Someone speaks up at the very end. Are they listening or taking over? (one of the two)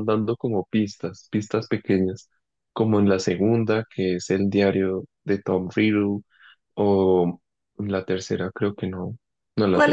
taking over